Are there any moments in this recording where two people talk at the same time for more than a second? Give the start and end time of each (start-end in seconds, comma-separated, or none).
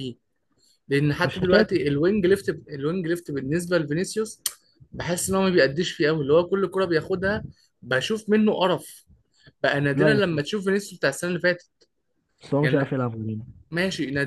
none